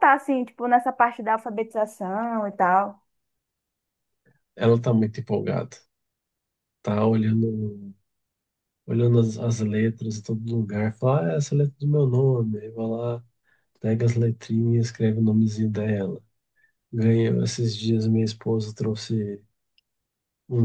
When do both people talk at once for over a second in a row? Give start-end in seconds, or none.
none